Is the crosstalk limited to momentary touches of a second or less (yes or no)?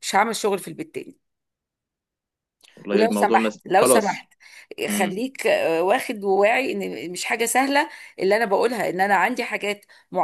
no